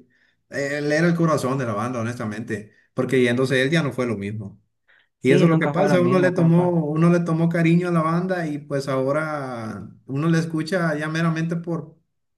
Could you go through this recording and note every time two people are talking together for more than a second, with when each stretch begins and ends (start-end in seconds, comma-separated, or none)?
5.2-6.8